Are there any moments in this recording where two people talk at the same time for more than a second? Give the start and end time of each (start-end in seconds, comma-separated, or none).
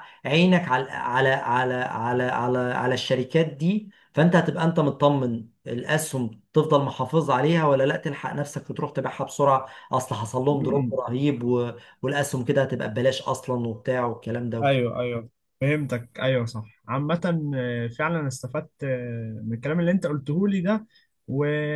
none